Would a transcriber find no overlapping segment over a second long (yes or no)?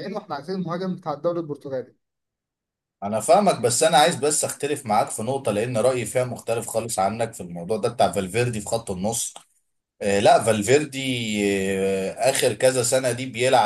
yes